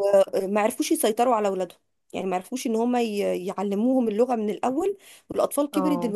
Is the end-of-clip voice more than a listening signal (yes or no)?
no